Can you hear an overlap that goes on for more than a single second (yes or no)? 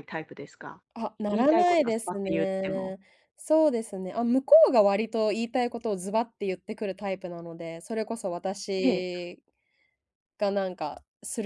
yes